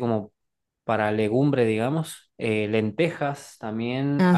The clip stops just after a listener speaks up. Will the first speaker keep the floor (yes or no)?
yes